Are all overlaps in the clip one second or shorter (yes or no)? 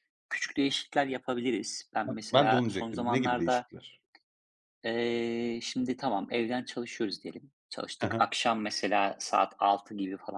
no